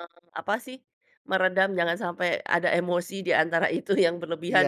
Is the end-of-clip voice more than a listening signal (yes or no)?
yes